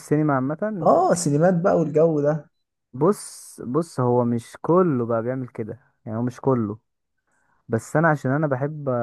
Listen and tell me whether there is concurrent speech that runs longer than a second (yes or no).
no